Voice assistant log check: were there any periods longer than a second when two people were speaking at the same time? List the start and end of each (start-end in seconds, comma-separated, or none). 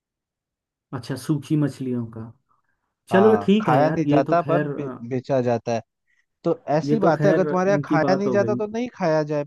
3.1-5.0, 6.8-8.6